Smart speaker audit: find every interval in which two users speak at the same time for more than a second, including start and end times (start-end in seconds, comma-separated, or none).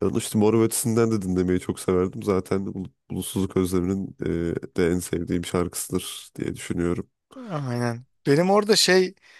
none